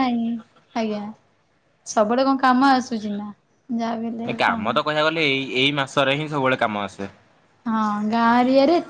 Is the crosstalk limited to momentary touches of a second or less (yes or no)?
yes